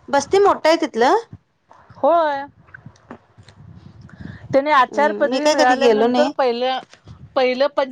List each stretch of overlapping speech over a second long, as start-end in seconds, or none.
4.9-6.3